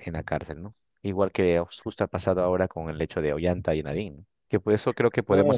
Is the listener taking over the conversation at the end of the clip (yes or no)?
no